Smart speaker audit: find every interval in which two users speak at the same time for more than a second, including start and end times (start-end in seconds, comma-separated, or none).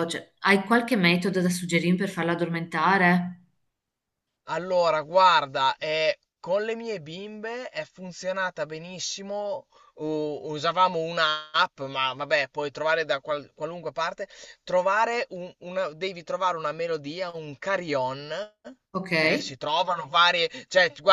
none